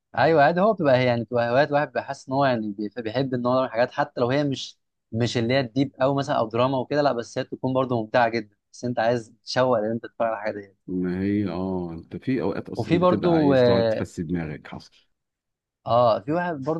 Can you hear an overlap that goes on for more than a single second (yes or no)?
yes